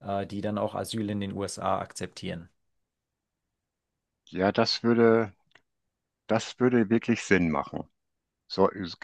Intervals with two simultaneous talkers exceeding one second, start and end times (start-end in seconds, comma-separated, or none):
none